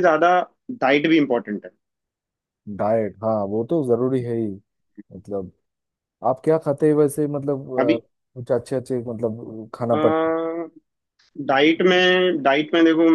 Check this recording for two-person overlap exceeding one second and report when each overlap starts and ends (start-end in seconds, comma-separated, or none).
none